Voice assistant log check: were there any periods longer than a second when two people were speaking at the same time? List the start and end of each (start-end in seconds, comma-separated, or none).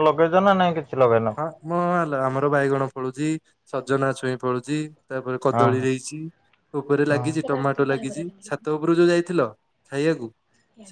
7.1-8.6